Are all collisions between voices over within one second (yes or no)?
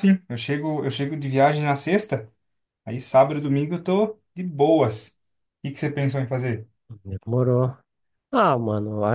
yes